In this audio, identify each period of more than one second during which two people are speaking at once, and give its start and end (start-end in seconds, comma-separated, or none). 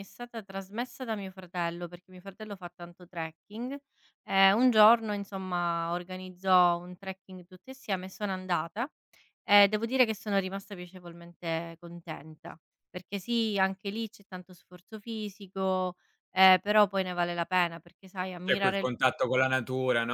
none